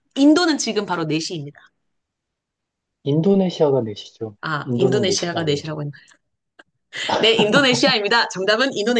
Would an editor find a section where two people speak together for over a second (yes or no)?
yes